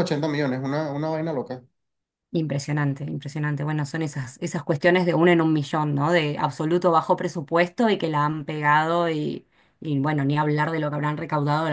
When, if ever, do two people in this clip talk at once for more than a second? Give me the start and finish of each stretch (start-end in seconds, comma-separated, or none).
none